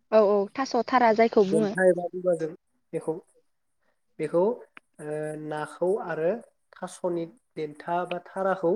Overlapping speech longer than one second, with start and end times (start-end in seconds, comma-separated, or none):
none